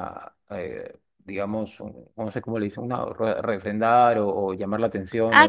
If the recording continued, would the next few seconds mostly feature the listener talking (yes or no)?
yes